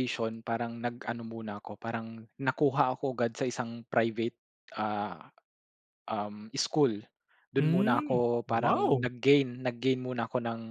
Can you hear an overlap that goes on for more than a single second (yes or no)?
yes